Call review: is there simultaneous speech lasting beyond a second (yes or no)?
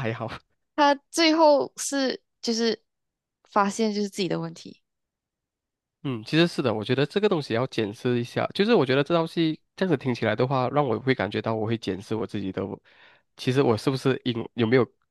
no